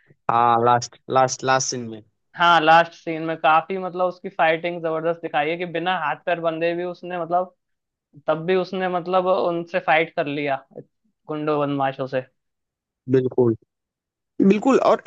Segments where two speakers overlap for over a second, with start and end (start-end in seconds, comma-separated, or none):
none